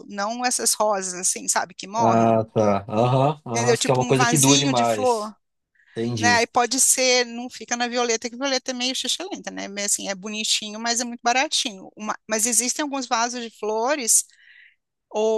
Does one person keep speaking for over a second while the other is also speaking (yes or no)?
yes